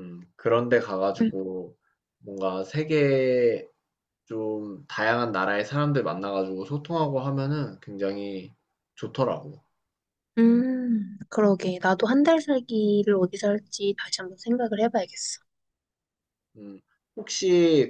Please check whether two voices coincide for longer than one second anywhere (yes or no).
no